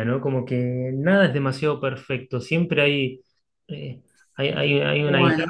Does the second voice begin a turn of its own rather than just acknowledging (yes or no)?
no